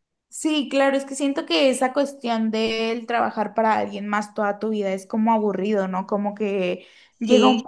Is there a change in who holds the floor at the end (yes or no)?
no